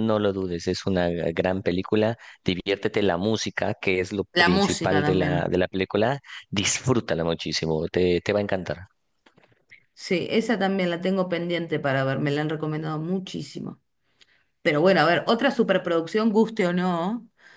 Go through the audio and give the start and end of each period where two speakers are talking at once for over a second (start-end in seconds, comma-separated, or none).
4.3-5.6